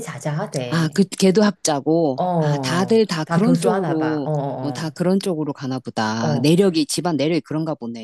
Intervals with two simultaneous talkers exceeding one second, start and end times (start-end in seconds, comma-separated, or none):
2.2-4.9